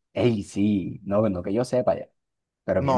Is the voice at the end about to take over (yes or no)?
yes